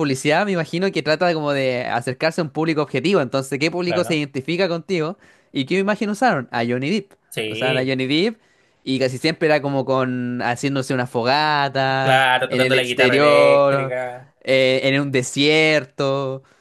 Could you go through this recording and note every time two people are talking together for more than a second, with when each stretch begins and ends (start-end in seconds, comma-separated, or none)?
12.0-13.9